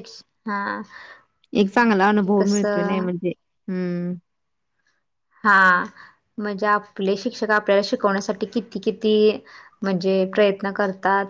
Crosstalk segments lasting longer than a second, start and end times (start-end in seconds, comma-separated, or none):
1.7-3.0